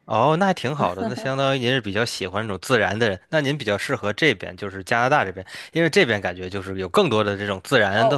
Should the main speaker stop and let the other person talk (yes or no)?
yes